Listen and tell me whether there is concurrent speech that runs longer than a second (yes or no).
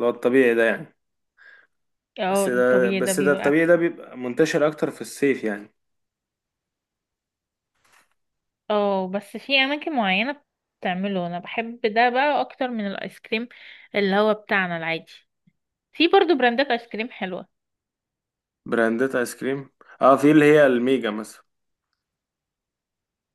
yes